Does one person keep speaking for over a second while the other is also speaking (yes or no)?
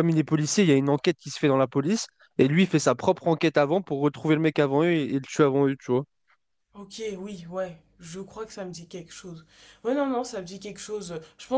no